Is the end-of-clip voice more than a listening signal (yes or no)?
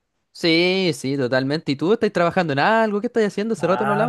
yes